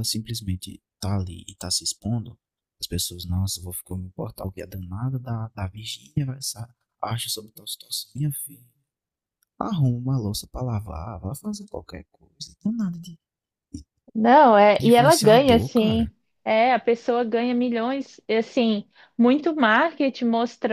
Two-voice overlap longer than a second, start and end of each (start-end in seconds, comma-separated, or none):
14.8-16.1